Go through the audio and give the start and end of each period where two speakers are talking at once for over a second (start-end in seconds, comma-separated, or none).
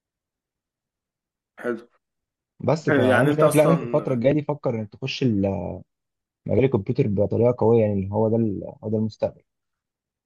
2.9-4.2